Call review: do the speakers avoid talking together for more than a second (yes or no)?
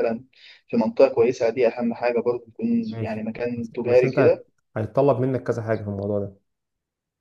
no